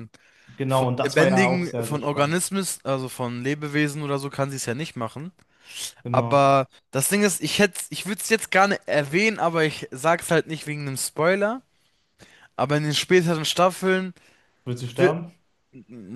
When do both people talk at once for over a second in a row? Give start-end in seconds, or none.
0.7-2.4